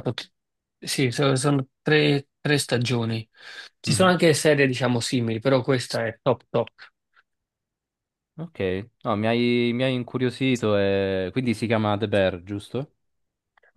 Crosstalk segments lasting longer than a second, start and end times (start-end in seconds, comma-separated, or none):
none